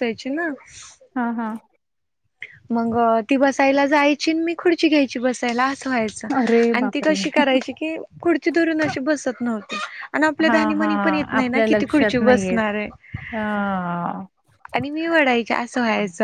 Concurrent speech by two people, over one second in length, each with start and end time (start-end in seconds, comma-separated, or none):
10.5-12.7